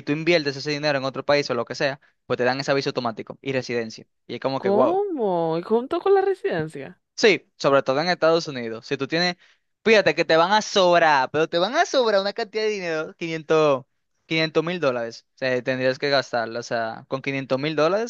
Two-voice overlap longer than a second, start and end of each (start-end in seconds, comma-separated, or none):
none